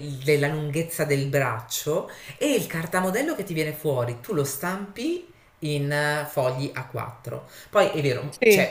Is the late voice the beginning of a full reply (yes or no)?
no